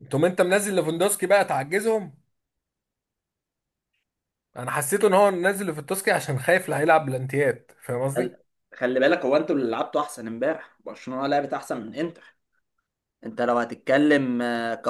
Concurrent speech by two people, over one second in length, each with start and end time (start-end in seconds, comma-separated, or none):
none